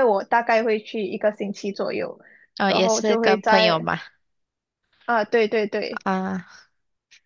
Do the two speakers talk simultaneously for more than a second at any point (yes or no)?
yes